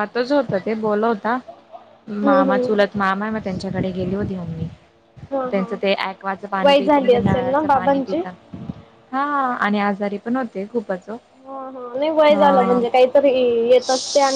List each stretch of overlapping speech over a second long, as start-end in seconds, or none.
6.6-8.2